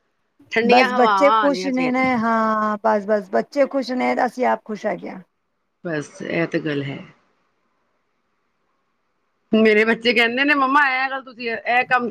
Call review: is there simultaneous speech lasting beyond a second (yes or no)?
yes